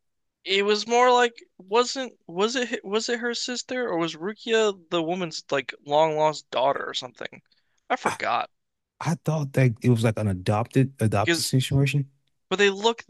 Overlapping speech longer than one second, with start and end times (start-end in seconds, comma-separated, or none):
none